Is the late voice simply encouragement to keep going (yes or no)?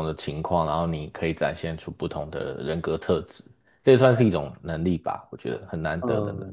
no